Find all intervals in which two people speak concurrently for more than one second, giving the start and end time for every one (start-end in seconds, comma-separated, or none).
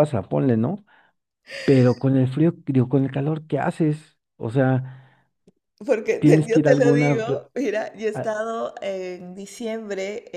6.2-7.4